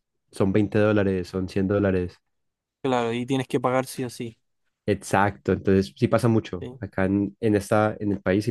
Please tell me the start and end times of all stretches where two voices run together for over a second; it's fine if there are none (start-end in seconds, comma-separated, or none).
none